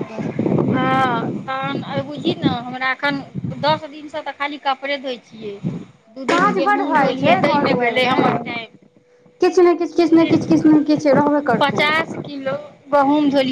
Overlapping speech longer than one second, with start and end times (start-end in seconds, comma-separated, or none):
6.3-8.2